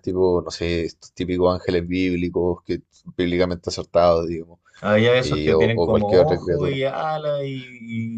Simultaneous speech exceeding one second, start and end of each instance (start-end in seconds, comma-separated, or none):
5.2-6.8